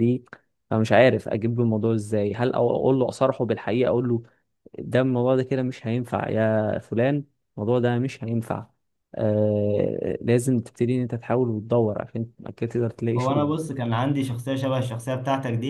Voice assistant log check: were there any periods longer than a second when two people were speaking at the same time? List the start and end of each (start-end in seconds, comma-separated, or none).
none